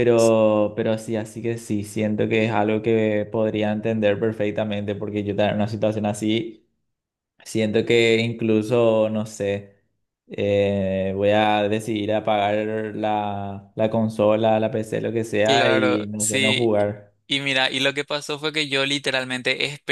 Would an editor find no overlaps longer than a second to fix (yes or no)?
no